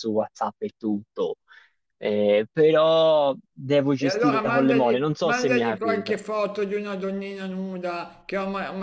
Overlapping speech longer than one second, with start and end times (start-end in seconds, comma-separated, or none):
4.0-6.2